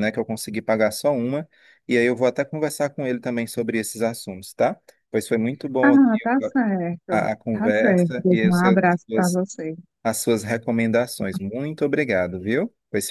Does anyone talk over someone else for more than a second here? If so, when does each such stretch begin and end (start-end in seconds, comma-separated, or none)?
7.1-9.4